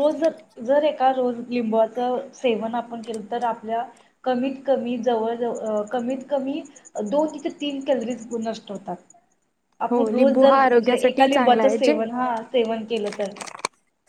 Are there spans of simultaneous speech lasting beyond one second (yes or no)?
yes